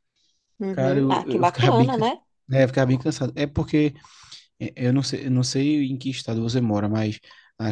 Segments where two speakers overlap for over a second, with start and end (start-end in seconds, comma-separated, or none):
0.7-2.0